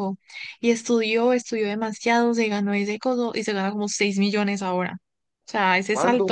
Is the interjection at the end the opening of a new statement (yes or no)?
no